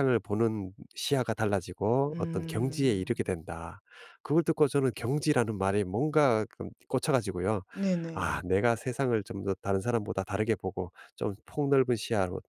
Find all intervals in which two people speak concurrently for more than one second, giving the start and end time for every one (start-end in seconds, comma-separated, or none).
2.1-3.5